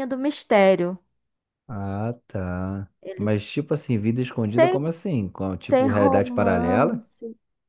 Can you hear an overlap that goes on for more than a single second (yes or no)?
yes